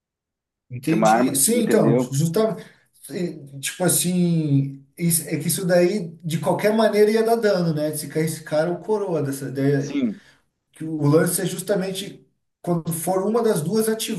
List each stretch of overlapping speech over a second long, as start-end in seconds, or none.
0.9-2.2